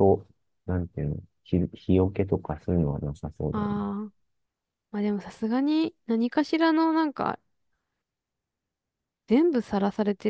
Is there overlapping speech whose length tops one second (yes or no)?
no